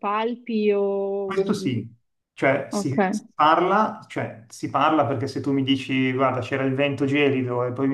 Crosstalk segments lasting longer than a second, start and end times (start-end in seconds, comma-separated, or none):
none